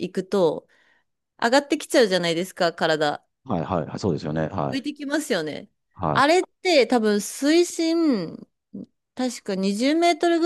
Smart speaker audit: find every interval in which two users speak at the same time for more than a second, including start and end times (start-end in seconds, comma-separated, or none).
none